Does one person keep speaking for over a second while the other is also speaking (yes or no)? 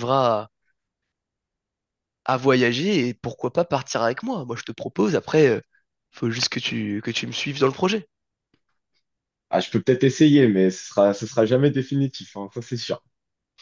no